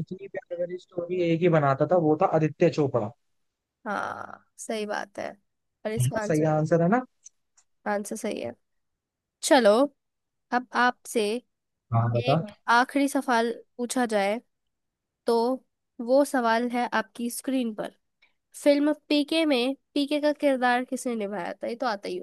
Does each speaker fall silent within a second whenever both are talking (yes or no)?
yes